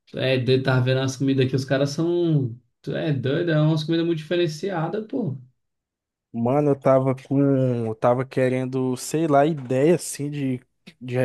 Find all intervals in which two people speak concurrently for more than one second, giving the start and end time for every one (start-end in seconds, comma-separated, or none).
none